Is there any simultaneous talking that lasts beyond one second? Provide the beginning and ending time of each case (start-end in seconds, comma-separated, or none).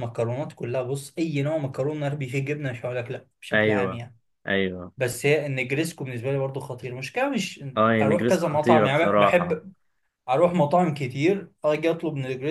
8.0-9.6